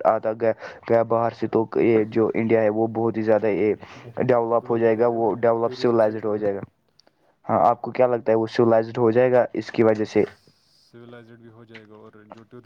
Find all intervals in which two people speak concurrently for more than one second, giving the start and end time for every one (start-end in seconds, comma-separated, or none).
4.6-6.5